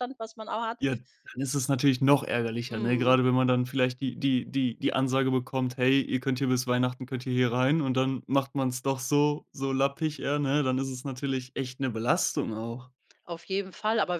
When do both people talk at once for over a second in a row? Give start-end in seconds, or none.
none